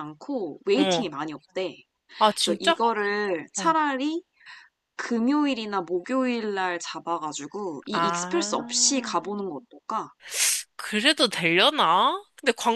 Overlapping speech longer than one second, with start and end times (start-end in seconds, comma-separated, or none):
7.9-9.1